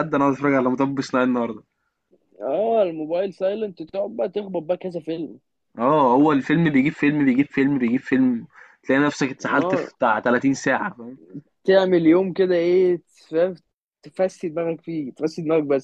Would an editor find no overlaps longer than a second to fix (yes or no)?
yes